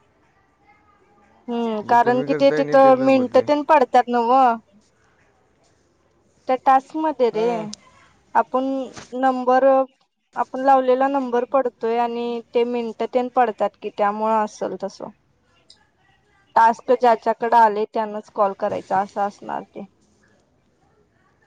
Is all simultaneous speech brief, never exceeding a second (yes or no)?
no